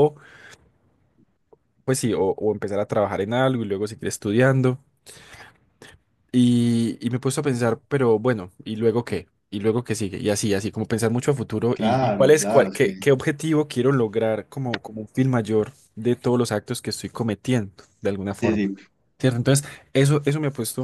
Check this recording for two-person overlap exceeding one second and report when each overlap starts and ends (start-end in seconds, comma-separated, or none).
11.7-12.9